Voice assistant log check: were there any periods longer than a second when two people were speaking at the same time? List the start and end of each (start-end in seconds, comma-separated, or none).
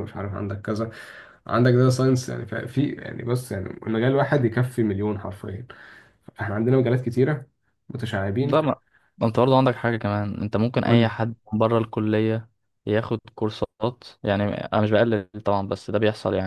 none